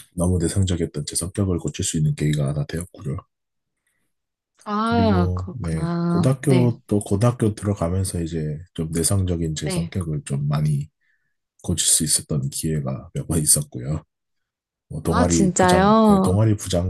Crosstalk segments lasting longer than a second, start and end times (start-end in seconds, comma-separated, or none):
4.9-6.7, 15.1-16.4